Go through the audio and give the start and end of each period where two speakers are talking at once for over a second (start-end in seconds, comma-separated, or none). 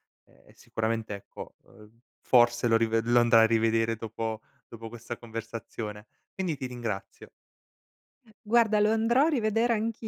none